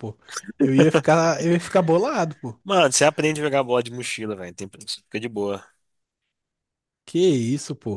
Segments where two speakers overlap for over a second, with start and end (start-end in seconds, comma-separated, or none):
none